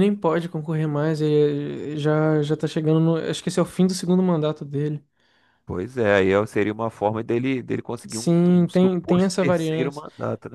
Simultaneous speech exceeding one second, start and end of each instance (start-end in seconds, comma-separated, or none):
8.1-10.0